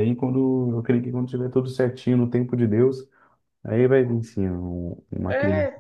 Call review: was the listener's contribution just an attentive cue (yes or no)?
no